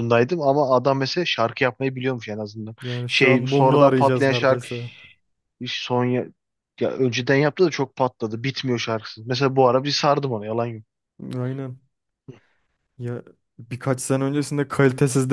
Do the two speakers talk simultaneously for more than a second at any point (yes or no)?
yes